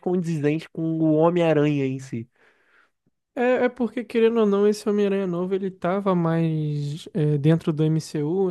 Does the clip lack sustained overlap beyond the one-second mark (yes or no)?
yes